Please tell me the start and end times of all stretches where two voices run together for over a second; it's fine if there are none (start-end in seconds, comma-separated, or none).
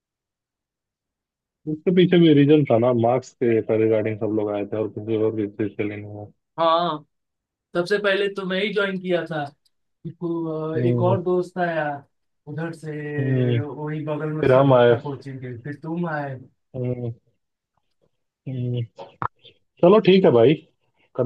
none